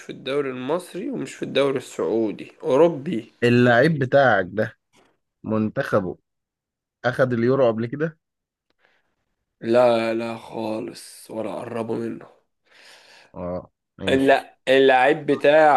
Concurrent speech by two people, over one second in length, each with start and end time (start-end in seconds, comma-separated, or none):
none